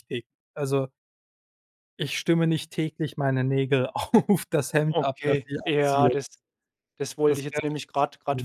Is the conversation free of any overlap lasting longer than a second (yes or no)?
no